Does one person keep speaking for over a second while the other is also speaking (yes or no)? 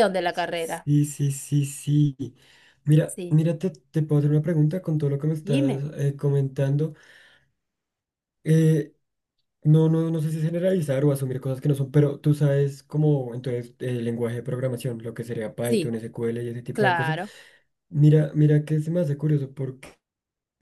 no